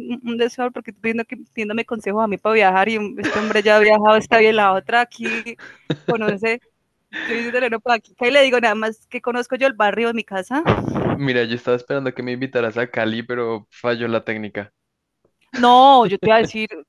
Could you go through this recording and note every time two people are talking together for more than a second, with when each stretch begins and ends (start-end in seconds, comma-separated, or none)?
none